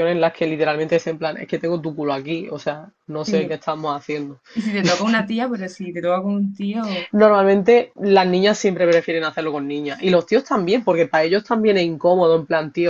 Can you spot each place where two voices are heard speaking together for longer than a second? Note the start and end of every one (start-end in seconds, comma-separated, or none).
none